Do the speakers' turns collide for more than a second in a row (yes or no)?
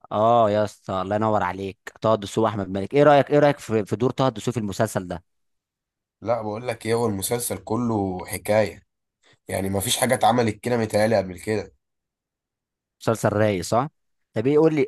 no